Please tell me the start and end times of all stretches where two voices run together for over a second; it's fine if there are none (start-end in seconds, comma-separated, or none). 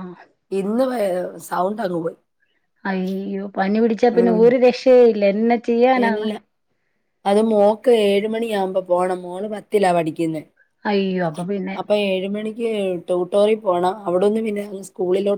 none